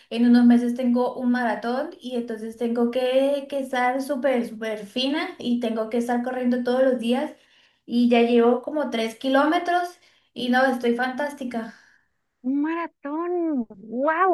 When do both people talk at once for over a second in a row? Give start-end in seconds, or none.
none